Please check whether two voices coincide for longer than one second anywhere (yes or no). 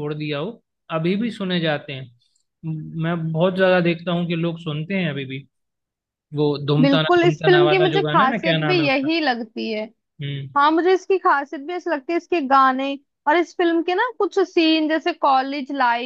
yes